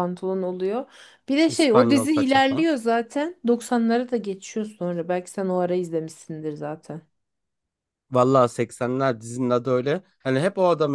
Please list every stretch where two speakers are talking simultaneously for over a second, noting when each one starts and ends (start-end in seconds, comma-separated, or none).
1.5-2.7